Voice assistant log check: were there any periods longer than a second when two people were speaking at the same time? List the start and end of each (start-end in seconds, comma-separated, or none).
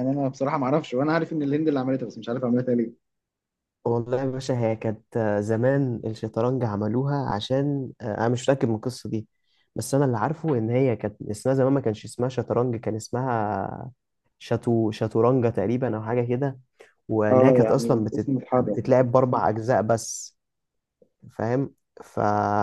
17.3-18.8